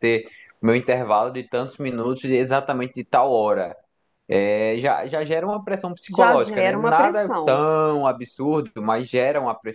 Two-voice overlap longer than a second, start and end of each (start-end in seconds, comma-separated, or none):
6.1-7.6